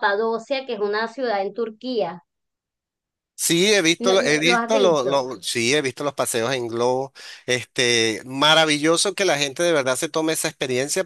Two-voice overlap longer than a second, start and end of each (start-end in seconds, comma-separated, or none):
4.0-5.2